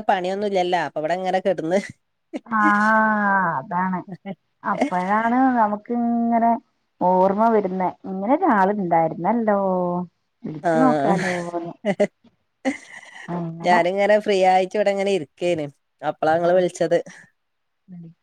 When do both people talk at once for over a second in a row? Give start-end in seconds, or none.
none